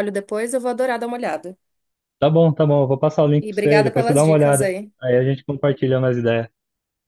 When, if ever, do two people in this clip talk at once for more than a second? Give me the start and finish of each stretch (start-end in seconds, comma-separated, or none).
3.4-4.9